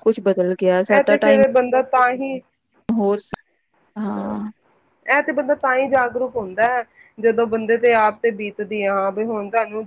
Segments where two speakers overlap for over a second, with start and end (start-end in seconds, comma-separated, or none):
none